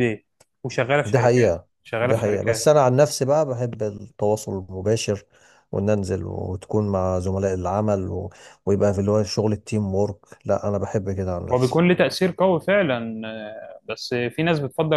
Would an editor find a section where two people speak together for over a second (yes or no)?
yes